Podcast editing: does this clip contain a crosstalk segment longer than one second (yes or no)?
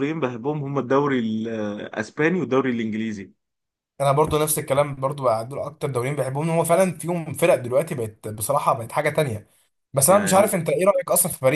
no